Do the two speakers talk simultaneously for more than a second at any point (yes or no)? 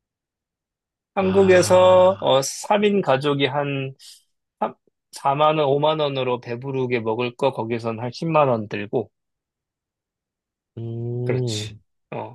yes